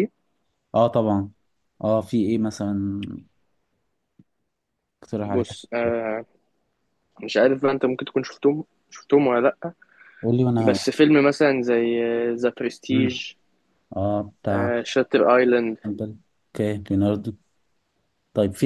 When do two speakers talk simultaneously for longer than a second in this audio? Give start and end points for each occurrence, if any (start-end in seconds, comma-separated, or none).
none